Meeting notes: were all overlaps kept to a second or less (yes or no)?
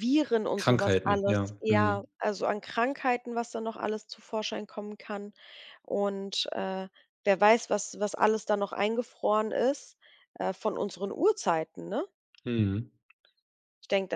no